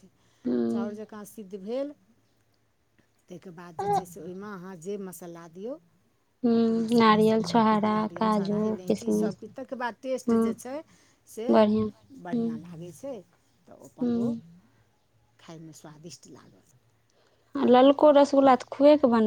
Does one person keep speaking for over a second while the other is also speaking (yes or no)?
yes